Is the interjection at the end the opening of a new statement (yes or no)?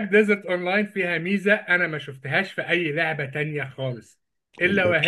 no